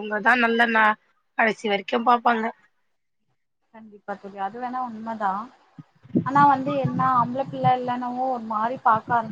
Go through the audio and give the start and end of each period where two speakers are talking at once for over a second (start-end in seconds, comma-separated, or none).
none